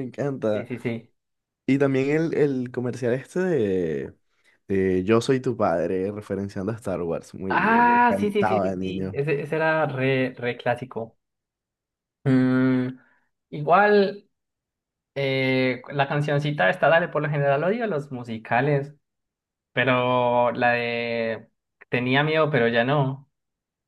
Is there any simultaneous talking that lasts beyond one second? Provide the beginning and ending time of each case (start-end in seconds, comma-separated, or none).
7.5-9.2